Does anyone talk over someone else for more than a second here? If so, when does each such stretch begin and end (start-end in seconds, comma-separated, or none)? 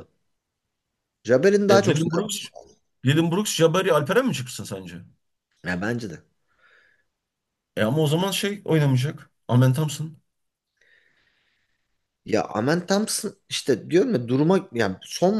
none